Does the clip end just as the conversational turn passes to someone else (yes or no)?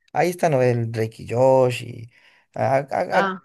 no